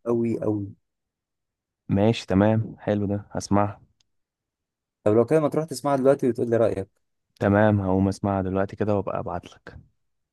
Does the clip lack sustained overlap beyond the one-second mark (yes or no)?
yes